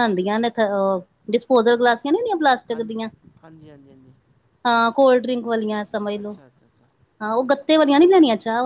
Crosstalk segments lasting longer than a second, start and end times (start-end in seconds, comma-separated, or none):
none